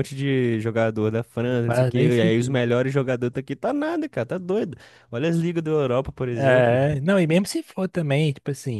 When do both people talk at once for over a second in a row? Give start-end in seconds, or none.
1.4-2.8